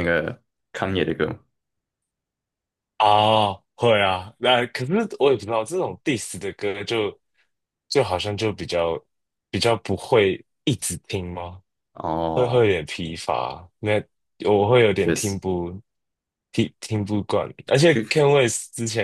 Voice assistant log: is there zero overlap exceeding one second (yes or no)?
yes